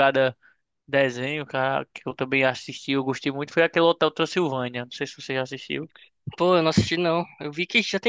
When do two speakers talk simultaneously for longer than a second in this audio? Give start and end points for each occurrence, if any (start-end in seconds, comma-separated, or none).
none